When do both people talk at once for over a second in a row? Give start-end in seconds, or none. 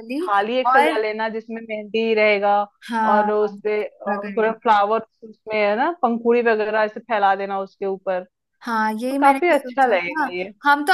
3.1-4.6, 8.9-10.2